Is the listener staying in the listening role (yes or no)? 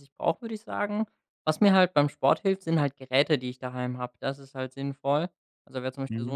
yes